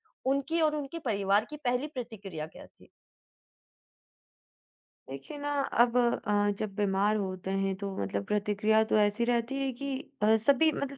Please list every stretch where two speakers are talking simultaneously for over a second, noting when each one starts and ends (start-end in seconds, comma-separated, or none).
none